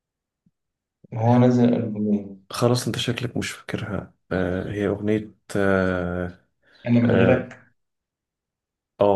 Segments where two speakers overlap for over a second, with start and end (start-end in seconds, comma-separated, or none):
none